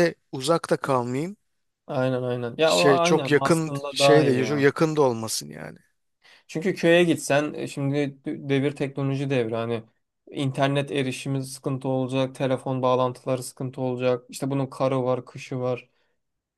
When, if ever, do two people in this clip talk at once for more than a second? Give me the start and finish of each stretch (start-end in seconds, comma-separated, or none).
2.6-4.7